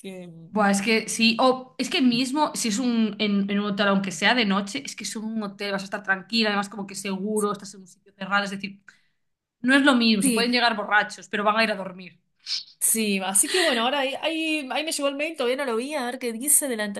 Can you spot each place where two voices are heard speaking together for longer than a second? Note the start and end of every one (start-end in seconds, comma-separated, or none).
none